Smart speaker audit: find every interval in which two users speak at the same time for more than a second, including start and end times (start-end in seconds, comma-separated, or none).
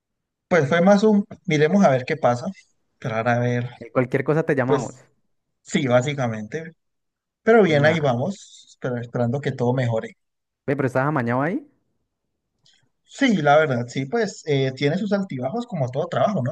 none